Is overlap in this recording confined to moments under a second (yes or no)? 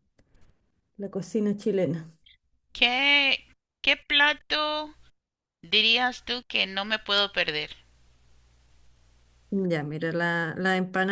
yes